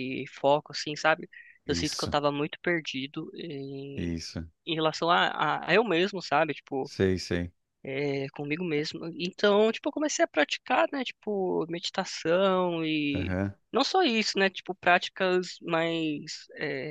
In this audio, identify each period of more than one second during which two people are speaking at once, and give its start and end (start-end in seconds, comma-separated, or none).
none